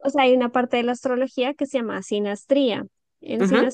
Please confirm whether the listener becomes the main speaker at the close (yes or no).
no